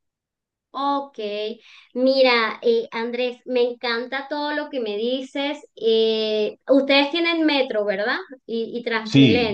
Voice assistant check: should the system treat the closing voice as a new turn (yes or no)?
yes